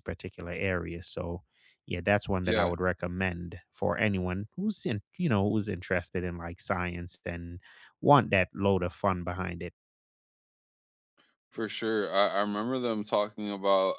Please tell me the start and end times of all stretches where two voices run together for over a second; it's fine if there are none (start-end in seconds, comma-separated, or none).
none